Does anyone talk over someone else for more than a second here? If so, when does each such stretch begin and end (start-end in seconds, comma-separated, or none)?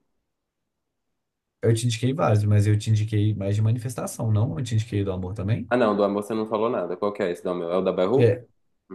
none